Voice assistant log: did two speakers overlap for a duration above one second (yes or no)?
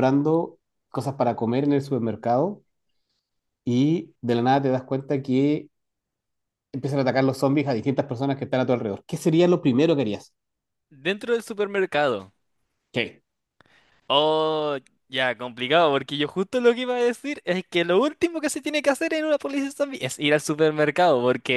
no